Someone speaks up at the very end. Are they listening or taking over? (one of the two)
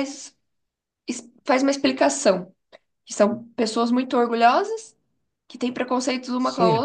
listening